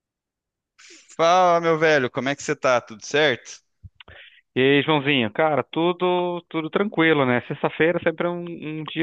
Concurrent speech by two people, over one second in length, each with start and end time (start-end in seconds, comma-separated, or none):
none